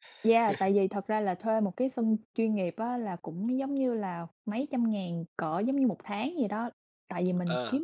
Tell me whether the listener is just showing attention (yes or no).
yes